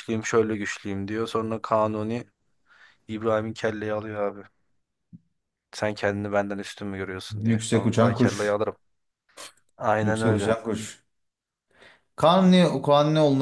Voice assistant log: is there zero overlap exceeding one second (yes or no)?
no